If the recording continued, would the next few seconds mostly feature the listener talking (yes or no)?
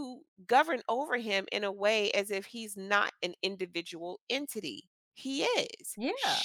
no